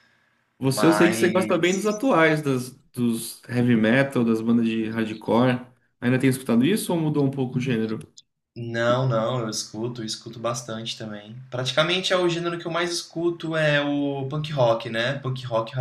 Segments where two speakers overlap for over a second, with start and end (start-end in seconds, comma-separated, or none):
0.6-1.8